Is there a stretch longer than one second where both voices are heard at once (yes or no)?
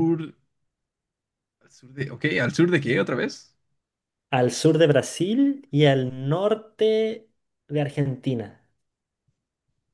no